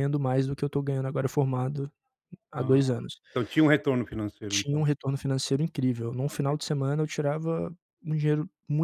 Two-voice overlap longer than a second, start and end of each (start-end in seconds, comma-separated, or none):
none